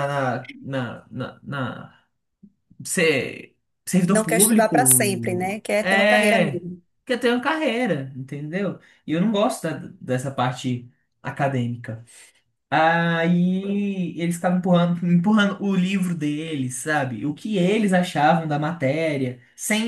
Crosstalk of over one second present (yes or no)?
yes